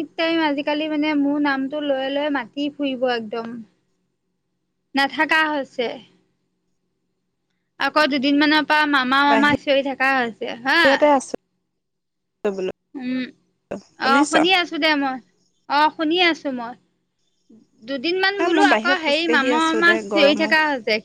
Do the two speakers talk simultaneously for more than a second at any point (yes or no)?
yes